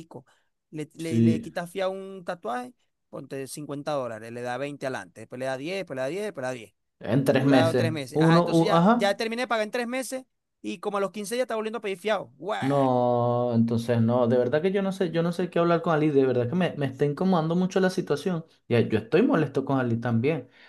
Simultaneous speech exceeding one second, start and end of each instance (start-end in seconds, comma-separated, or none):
7.3-9.2